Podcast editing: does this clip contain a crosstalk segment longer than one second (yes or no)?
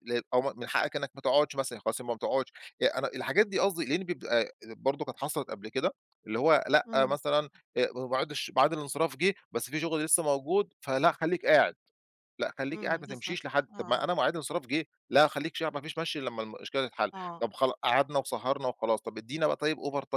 yes